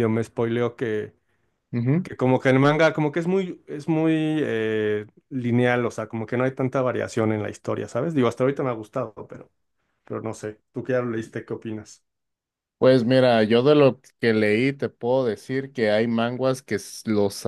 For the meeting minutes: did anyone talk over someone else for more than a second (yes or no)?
no